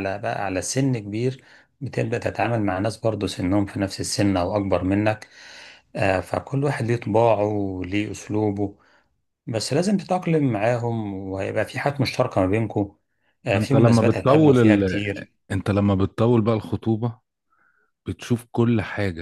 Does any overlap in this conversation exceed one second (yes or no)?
yes